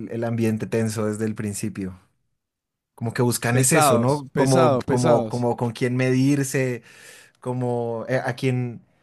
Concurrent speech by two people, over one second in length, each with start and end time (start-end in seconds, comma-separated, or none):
3.5-5.5